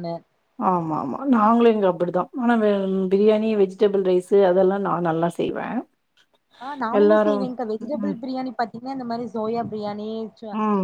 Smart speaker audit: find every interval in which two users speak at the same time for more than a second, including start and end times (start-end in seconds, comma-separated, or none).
none